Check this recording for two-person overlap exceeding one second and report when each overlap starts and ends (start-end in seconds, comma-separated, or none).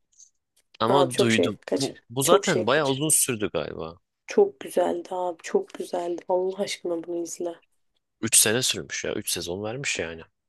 0.9-3.0